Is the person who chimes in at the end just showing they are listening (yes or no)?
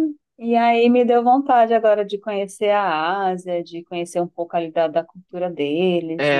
no